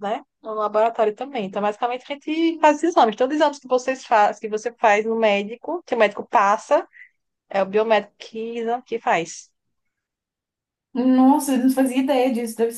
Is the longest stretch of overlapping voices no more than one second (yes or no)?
yes